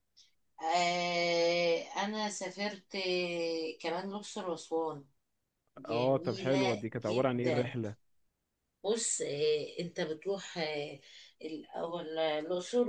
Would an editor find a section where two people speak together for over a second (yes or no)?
yes